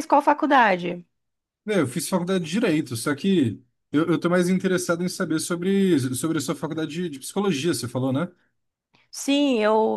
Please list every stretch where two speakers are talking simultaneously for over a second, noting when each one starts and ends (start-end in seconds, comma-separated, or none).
none